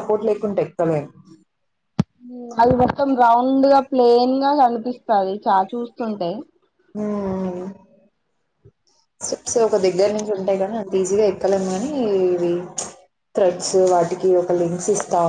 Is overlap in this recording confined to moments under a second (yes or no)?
yes